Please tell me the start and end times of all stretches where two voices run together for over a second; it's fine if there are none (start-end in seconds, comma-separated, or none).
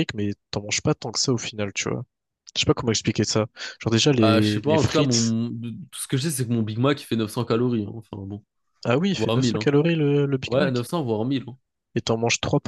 4.2-5.3